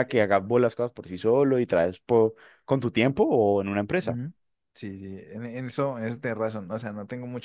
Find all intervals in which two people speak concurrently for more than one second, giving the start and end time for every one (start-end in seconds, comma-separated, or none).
none